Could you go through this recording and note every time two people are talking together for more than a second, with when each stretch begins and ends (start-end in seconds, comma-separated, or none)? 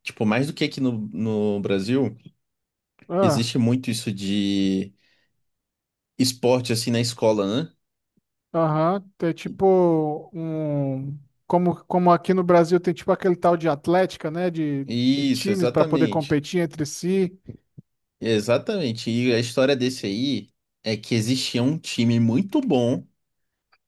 14.8-16.4